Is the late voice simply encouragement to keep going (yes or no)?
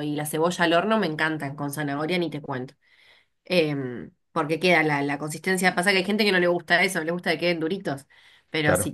yes